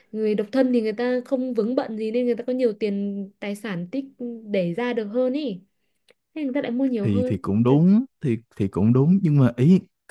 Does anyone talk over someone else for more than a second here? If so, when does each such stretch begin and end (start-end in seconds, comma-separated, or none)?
none